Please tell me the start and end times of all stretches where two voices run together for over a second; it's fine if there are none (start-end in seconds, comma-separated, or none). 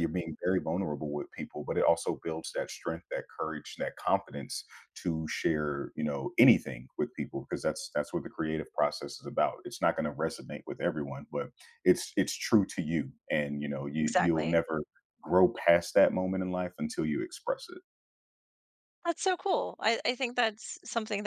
none